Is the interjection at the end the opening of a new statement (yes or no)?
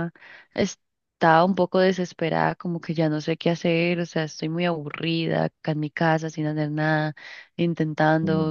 no